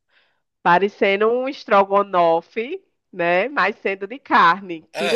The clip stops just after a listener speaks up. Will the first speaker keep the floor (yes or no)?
no